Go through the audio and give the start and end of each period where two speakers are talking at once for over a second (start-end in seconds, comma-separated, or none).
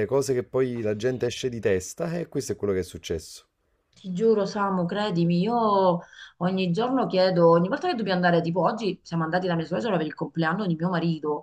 none